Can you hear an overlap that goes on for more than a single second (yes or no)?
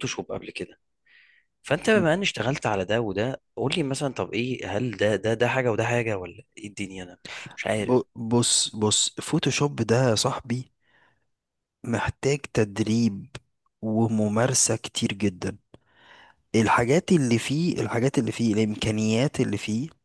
no